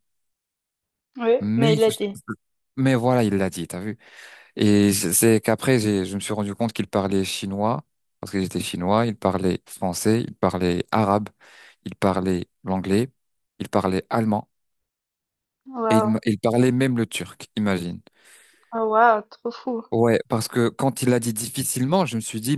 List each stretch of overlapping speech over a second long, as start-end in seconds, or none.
none